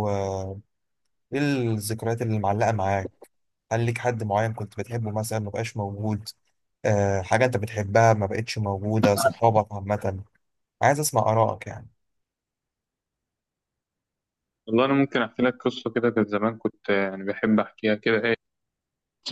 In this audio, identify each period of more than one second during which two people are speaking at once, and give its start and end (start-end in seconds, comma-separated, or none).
none